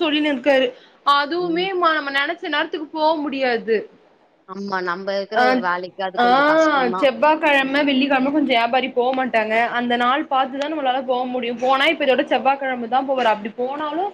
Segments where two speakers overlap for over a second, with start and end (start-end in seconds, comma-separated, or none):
none